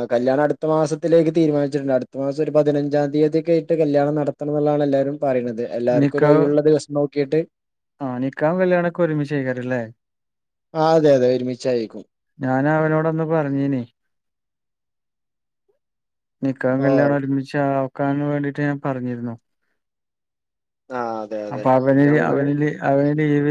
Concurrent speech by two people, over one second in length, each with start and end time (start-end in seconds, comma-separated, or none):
none